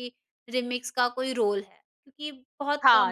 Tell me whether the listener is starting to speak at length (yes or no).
yes